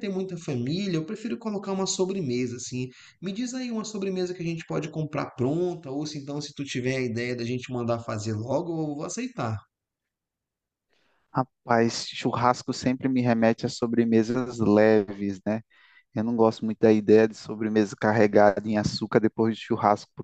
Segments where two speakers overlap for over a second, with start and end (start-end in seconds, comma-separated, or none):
none